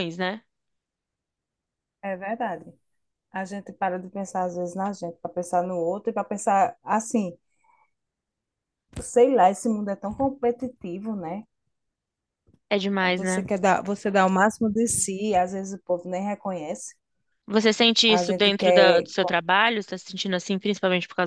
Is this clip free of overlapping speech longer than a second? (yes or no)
no